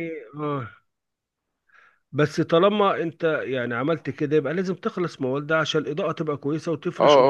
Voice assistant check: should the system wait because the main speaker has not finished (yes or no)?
no